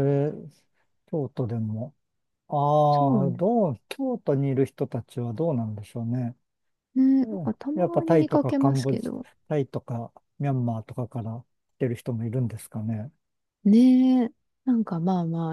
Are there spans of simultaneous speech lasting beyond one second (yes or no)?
yes